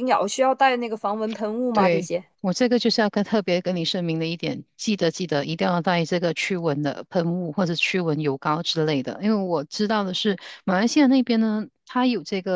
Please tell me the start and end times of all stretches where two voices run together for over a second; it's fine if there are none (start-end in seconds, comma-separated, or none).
none